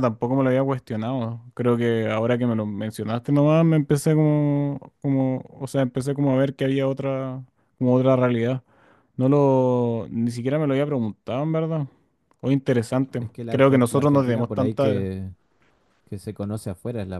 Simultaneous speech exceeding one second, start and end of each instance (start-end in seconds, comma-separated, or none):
13.2-15.1